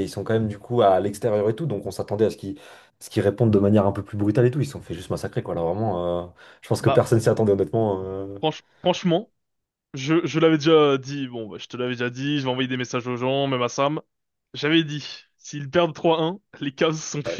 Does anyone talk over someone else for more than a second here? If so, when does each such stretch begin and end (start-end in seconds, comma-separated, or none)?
none